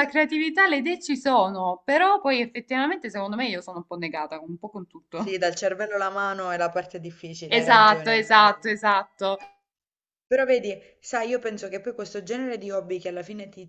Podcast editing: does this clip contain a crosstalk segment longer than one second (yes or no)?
yes